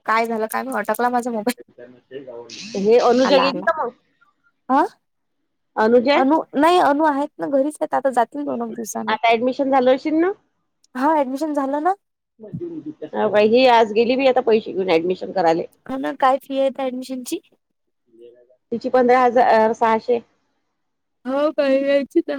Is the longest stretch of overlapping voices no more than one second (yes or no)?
yes